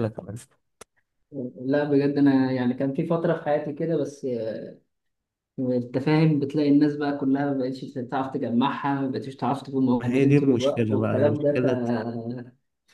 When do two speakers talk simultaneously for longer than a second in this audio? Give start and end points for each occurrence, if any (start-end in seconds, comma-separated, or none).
10.0-11.5